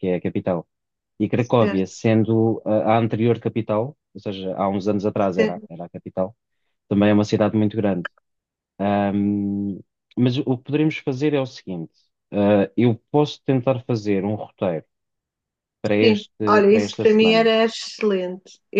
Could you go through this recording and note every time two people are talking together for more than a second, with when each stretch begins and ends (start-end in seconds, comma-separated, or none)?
16.0-17.5